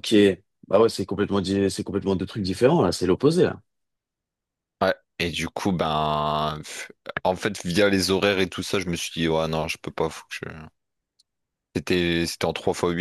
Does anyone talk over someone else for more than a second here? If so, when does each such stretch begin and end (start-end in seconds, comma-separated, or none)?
none